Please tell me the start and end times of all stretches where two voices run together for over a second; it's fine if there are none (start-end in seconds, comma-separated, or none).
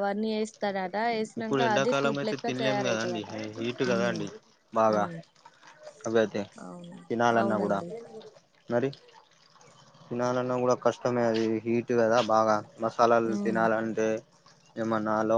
1.4-3.2